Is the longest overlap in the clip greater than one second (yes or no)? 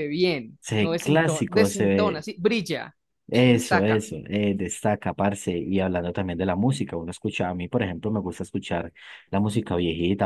yes